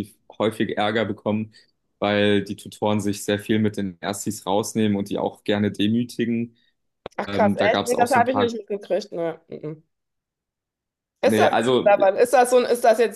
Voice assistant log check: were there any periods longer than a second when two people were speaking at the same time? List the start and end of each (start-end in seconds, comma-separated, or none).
7.2-8.5